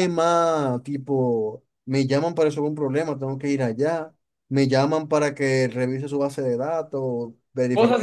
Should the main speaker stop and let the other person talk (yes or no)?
yes